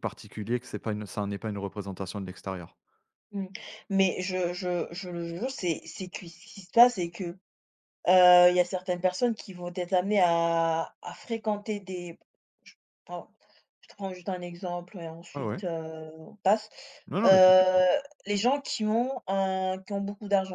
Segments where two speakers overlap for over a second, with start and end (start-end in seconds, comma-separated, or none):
none